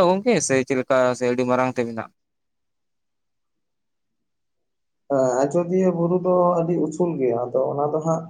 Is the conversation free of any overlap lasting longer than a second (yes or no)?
yes